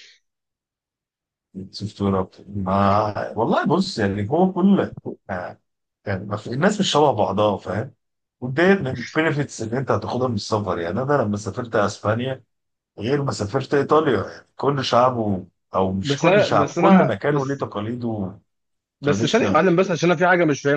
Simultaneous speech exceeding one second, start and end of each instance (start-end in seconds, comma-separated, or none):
16.0-17.7